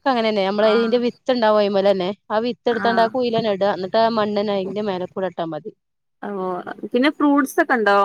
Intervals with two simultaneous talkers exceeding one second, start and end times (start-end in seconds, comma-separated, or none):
none